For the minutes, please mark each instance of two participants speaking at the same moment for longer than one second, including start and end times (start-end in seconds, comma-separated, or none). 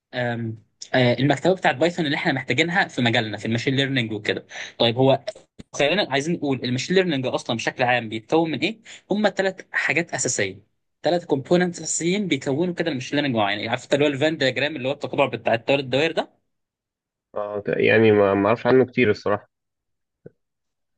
none